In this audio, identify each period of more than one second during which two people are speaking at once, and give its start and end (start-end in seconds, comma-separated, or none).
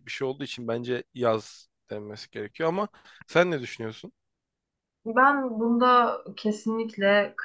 none